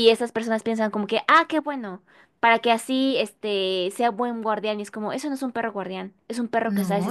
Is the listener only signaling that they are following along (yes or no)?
yes